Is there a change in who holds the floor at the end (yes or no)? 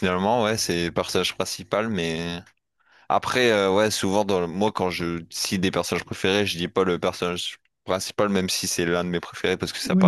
yes